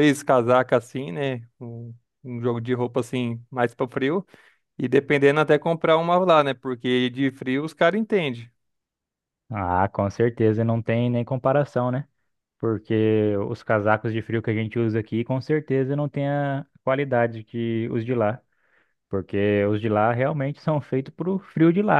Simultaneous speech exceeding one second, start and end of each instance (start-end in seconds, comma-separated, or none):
none